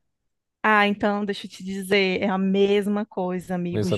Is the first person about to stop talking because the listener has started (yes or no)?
no